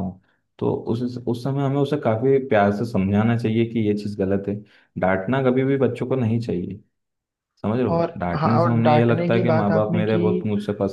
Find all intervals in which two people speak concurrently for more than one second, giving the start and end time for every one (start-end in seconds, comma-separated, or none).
7.9-10.2